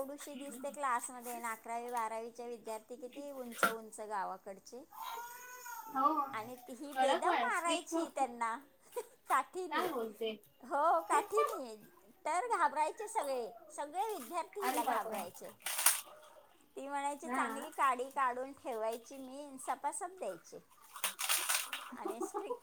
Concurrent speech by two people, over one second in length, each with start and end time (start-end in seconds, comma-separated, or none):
6.9-8.2